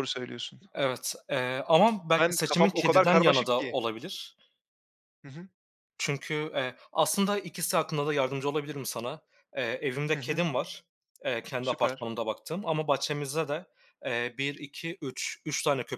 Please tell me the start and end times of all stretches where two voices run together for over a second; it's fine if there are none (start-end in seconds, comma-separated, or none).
2.2-3.8